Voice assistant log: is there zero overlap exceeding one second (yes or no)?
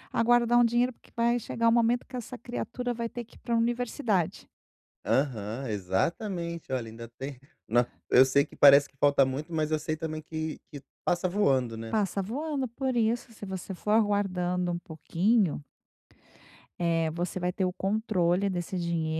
yes